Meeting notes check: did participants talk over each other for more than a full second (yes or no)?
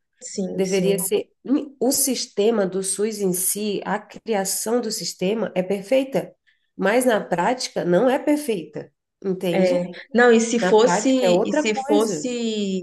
yes